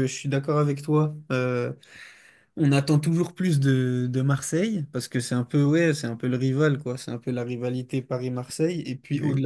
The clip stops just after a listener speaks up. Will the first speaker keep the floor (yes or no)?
yes